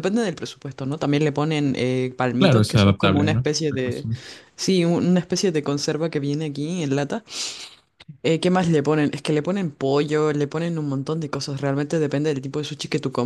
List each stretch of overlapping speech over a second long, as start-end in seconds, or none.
2.4-4.1